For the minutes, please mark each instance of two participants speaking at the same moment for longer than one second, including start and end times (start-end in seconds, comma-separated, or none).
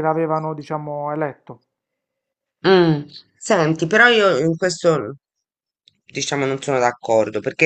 none